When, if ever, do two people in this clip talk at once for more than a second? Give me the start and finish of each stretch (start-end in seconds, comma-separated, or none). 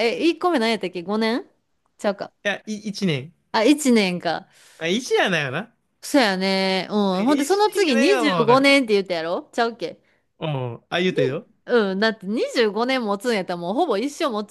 7.2-8.7